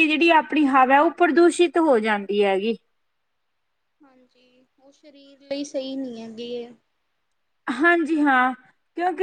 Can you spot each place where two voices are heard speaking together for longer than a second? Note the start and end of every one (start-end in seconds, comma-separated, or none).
none